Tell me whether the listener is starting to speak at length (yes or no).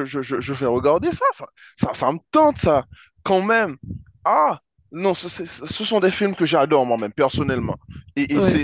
no